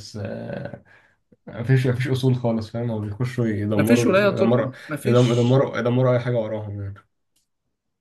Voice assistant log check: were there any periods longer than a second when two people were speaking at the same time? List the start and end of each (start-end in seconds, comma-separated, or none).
3.8-5.5